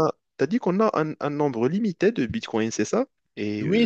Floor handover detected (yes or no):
yes